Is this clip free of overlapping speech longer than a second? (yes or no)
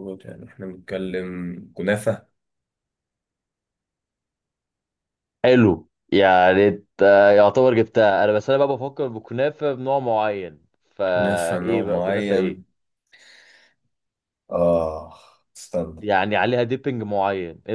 no